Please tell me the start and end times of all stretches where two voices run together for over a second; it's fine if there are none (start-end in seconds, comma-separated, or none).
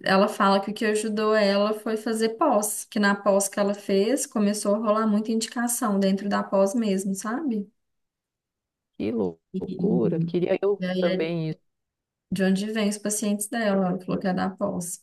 9.5-11.2